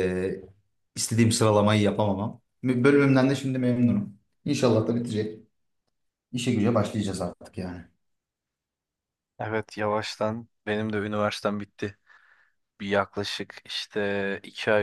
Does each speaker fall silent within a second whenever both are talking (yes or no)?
yes